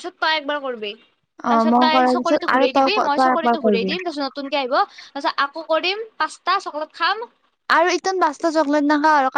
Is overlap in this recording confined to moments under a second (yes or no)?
no